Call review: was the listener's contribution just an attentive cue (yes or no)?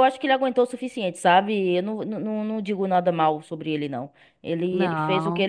yes